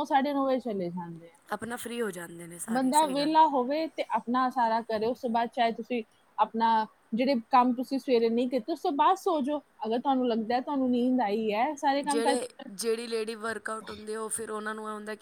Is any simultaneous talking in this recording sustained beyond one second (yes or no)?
no